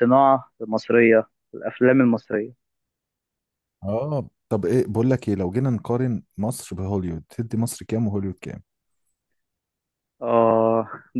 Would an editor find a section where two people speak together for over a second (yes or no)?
no